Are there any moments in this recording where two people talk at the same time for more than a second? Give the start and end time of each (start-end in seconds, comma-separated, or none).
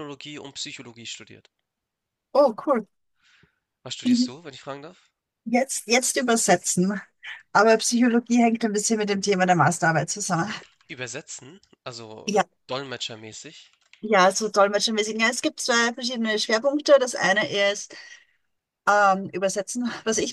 none